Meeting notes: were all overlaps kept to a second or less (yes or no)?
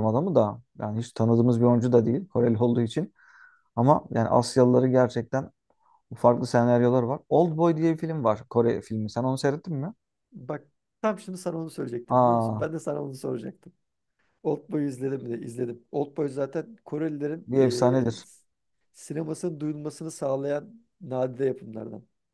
yes